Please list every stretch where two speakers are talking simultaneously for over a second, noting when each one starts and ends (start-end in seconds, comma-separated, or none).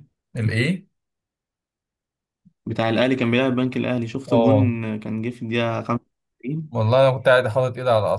none